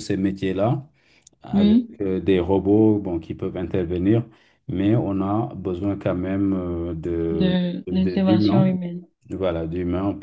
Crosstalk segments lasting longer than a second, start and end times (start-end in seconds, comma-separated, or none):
7.3-8.7